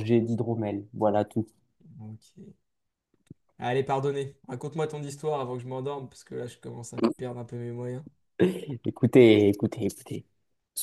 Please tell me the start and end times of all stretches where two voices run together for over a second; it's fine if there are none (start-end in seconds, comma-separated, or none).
none